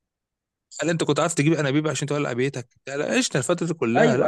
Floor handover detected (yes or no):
yes